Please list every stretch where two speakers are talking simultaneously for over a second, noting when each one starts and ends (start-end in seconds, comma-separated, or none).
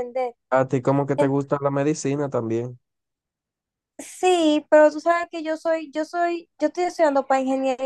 none